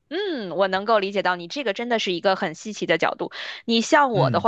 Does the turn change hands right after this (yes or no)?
no